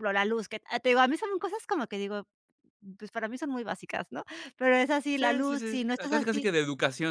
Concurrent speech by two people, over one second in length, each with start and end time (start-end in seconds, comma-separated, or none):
5.2-6.5